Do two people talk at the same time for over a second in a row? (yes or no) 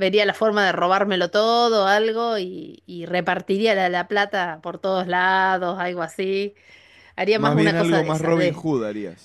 yes